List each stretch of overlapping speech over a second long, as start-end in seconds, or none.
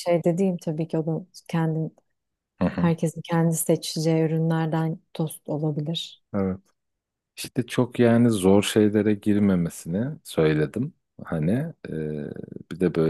none